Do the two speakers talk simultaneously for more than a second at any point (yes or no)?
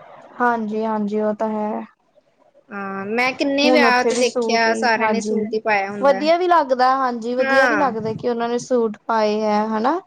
yes